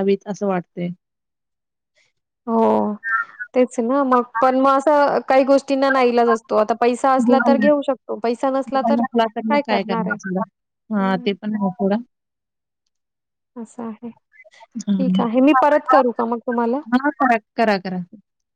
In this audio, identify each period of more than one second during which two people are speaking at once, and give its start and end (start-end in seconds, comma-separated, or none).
none